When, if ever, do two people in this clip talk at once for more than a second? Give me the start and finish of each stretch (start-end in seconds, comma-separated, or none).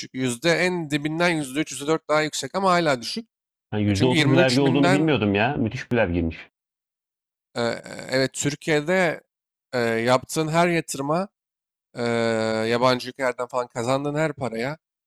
3.9-5.2